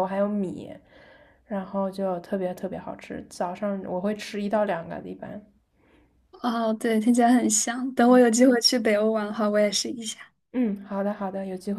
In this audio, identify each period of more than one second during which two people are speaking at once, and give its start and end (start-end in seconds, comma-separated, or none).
none